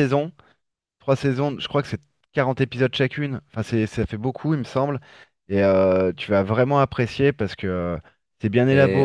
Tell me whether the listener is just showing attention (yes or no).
no